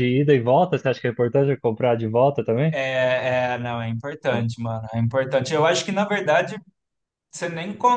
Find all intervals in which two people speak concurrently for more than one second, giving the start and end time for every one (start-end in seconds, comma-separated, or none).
none